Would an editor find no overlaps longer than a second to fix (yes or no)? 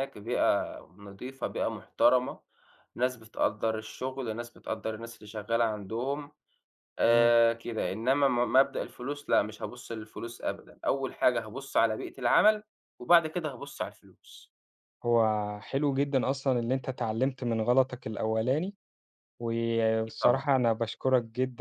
yes